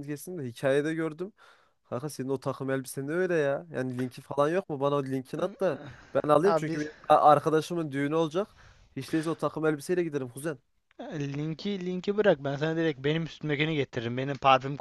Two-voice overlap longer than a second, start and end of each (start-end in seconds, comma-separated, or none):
none